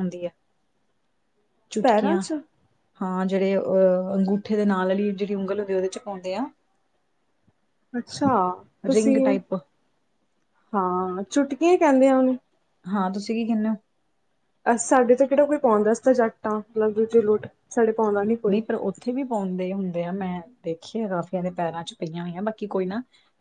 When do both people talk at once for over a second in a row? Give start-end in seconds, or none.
none